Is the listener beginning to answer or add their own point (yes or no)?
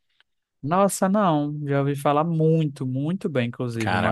yes